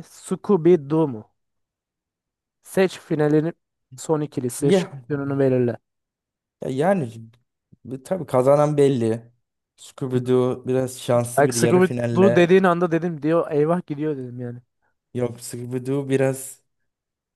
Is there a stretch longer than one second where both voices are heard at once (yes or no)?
yes